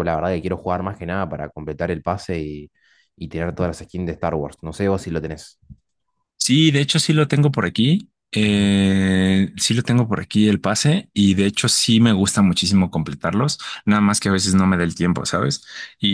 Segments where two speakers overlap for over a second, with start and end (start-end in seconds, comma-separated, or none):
none